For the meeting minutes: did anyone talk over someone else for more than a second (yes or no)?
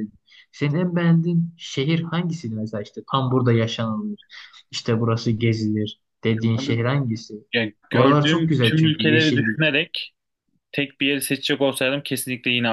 yes